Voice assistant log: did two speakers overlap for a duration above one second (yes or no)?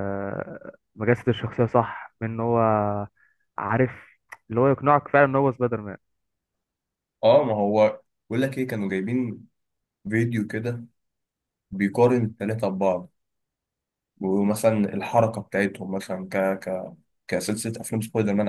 no